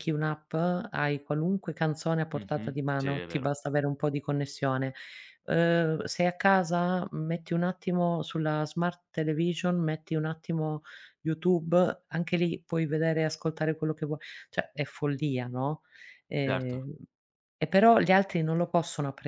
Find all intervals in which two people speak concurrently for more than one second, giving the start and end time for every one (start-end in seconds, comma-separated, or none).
2.3-3.5